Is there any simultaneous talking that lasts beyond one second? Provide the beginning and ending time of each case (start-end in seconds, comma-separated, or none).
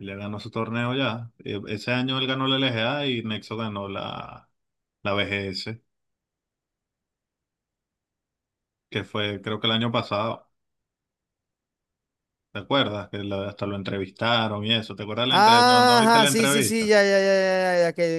15.3-17.0